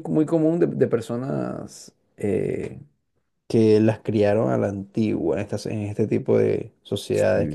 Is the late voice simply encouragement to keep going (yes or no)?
yes